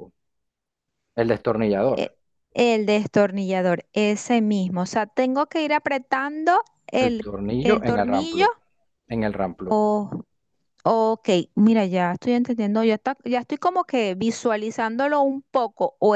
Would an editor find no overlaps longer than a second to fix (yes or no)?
no